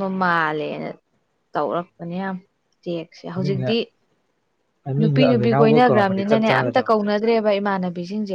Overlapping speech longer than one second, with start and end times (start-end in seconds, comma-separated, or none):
5.0-6.9